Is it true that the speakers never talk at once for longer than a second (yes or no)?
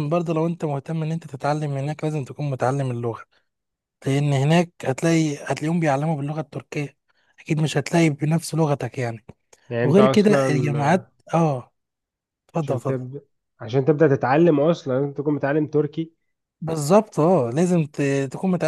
no